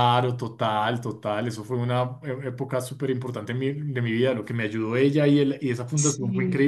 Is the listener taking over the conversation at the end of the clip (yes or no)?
no